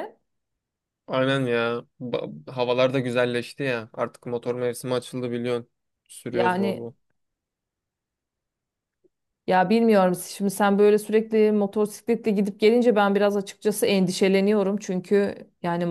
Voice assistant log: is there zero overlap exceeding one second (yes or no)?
yes